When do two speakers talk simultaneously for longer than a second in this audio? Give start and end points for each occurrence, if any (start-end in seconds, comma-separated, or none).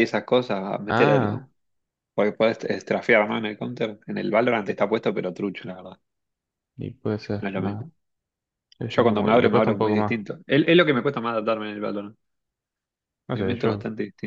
8.9-10.2